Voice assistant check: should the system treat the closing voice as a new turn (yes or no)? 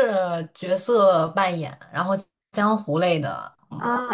yes